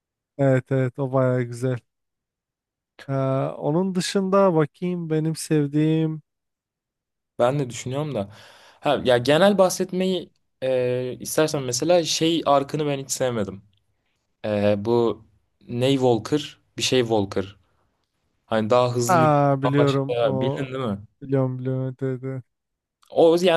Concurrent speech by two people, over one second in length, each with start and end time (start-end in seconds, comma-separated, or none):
19.1-20.6